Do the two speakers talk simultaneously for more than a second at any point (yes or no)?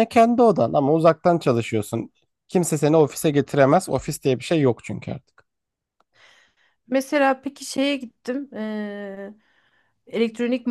no